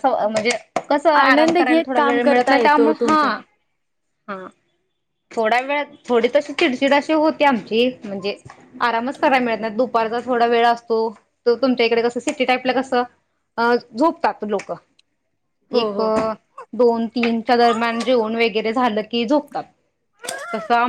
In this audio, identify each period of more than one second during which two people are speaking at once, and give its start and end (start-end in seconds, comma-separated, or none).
1.2-3.2